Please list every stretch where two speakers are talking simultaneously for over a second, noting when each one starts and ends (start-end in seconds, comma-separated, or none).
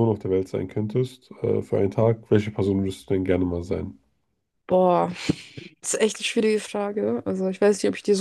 none